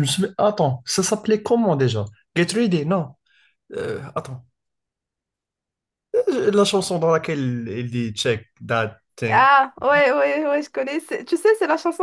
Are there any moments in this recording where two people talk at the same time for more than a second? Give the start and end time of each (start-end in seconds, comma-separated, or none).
none